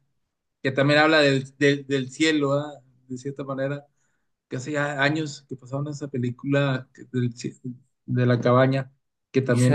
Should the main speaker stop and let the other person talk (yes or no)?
yes